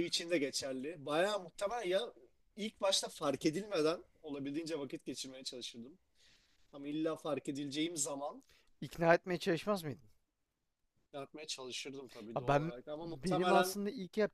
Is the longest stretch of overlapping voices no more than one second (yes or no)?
no